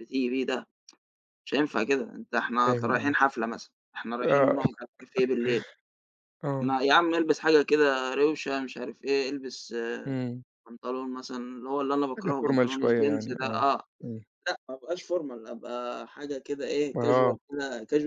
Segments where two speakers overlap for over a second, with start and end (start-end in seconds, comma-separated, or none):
12.2-13.7